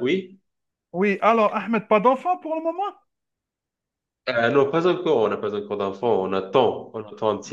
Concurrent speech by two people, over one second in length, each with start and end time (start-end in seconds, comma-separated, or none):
none